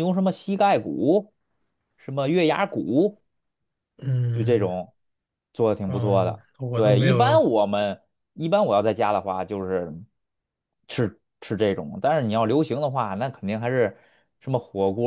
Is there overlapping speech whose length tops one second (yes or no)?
yes